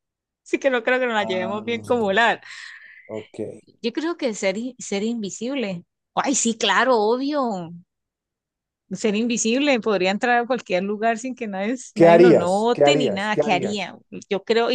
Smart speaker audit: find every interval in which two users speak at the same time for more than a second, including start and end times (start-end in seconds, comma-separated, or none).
11.9-13.9